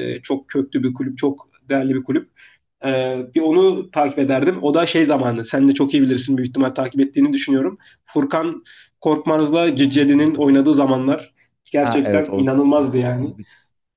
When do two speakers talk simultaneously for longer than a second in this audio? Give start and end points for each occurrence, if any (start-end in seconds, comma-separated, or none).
11.8-13.3